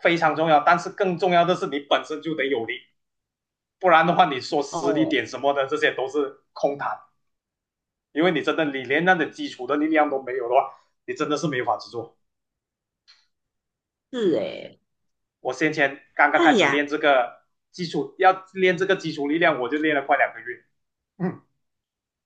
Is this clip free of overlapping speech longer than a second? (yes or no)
yes